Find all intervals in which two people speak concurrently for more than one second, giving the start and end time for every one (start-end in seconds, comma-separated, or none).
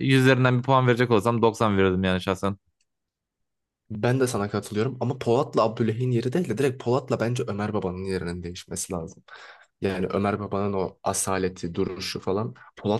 none